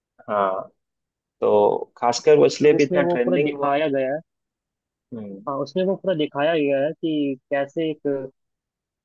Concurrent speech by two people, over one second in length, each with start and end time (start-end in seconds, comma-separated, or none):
2.5-3.9